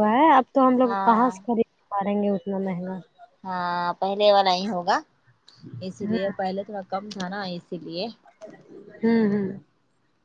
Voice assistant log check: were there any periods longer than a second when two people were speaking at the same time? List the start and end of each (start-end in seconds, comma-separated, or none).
none